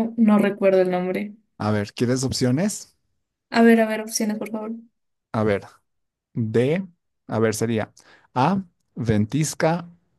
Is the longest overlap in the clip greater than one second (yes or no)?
no